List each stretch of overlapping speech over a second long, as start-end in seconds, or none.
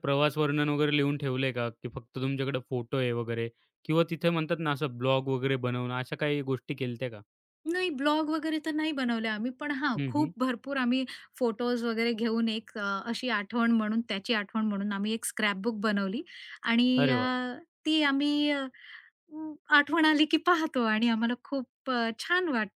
none